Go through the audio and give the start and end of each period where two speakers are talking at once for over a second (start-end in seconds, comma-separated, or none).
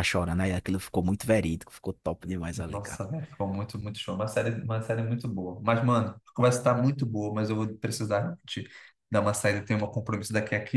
none